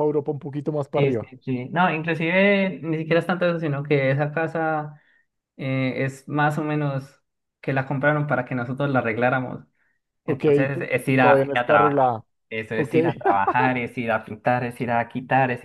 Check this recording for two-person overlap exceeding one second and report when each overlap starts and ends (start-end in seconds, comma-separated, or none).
10.3-12.1